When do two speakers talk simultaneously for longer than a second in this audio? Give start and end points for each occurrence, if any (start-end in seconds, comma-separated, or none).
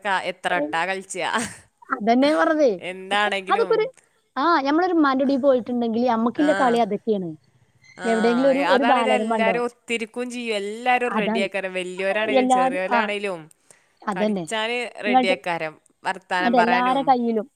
none